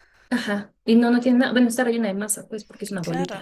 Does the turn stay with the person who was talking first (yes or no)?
no